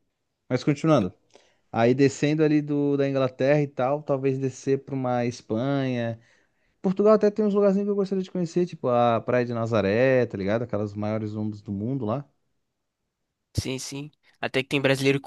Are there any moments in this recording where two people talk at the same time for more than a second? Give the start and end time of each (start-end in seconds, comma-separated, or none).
none